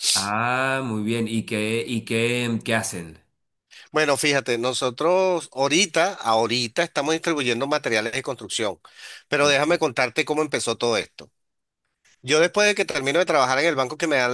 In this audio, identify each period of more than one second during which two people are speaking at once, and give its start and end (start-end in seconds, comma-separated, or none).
none